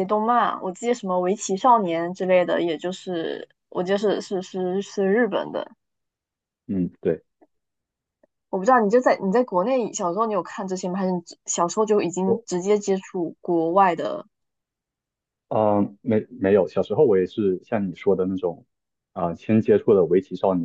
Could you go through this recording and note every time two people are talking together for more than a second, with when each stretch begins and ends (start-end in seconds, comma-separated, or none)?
none